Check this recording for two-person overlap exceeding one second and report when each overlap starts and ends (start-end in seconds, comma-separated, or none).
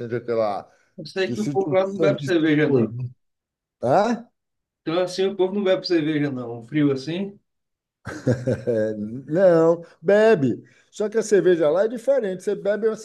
1.2-2.9